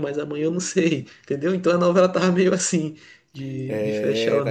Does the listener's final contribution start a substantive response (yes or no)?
yes